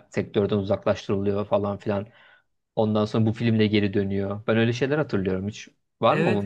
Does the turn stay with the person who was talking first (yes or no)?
no